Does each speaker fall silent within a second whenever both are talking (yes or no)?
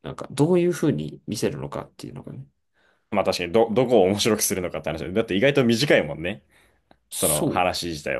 yes